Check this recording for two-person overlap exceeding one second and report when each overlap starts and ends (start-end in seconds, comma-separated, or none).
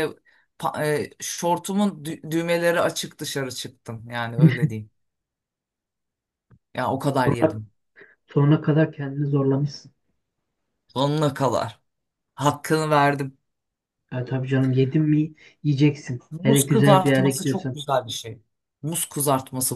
16.3-17.8